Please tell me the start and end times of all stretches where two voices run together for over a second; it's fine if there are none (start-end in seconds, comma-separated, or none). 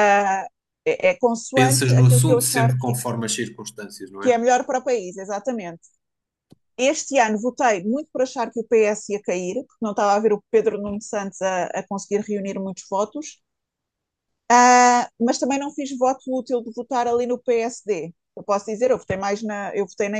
1.5-3.0